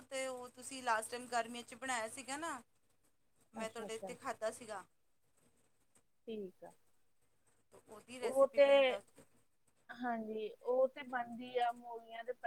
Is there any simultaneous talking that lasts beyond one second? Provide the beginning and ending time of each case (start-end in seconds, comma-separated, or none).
none